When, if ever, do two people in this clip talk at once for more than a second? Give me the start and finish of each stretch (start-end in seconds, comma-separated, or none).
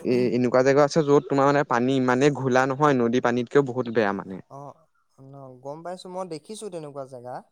none